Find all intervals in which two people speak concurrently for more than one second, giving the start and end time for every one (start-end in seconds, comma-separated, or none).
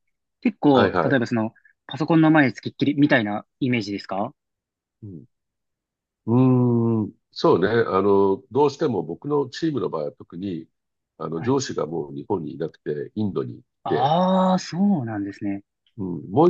none